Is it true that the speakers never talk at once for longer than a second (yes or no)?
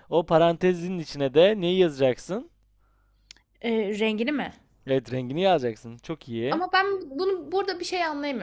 yes